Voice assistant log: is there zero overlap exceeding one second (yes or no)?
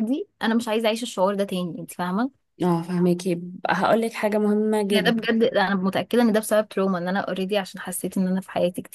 yes